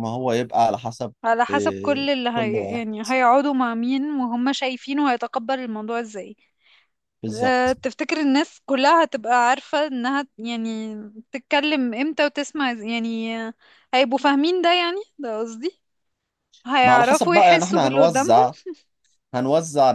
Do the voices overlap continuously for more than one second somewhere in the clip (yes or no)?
yes